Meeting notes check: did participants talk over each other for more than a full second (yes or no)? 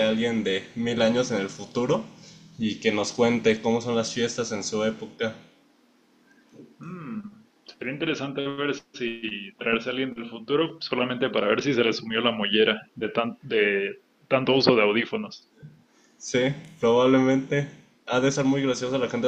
no